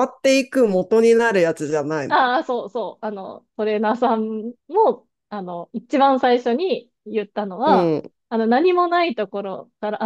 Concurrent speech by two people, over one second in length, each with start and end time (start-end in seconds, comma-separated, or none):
none